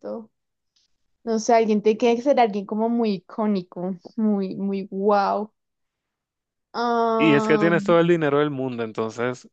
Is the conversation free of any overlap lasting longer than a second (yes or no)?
yes